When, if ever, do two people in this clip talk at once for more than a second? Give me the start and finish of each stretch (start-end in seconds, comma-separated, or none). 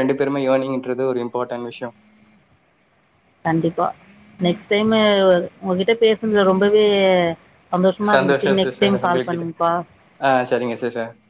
8.1-9.5